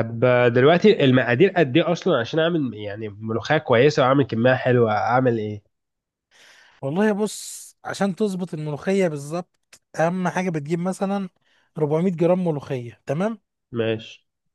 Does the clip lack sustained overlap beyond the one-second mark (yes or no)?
yes